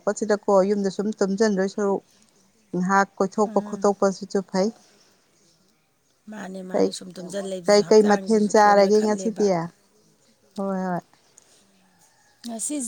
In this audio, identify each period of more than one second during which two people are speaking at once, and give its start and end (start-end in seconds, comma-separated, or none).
7.7-9.4